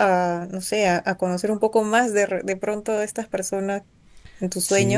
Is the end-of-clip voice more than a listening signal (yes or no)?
yes